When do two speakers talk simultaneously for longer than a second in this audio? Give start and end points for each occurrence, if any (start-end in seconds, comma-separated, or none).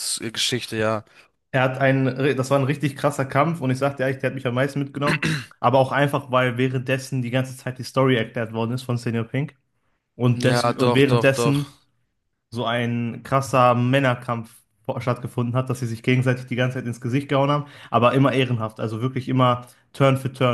10.4-11.7